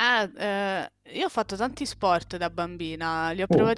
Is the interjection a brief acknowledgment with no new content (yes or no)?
yes